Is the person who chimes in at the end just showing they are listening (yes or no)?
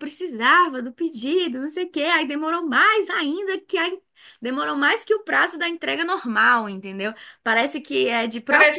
no